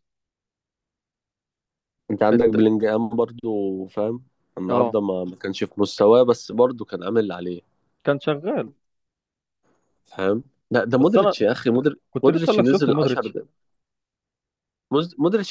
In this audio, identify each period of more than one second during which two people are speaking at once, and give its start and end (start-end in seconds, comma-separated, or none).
12.1-13.3